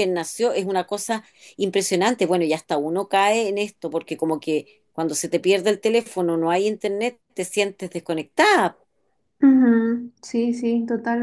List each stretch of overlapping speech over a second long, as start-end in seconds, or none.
none